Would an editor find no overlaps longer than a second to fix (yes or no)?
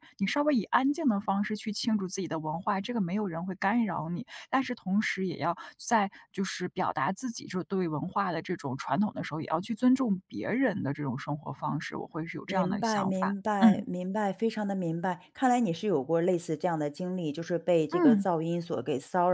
no